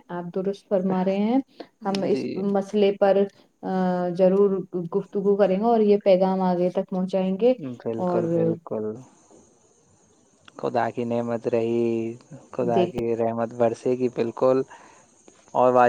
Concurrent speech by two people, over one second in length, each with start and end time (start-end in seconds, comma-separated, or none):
none